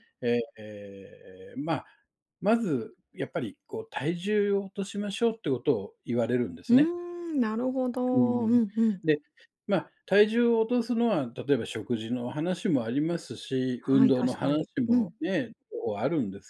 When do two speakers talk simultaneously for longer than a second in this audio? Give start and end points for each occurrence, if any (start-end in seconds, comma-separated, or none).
13.8-15.1